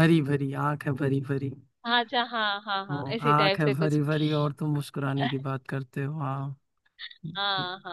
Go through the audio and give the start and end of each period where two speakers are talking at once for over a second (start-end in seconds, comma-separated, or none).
2.9-4.5